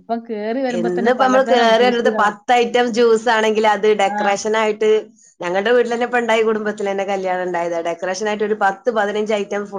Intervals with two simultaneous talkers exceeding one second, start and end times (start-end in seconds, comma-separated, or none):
0.8-2.4